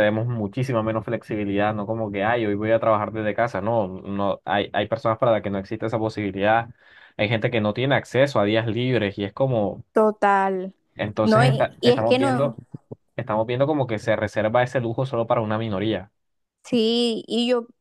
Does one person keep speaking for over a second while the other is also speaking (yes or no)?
yes